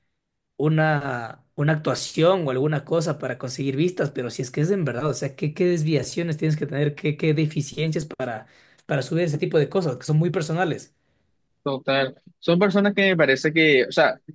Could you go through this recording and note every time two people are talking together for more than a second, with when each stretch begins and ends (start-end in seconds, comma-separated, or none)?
none